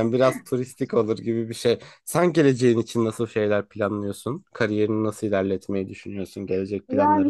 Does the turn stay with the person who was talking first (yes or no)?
no